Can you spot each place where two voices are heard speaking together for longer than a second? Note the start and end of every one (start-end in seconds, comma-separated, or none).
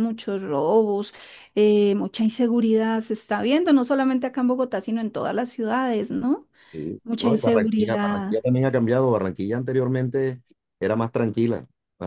7.0-8.4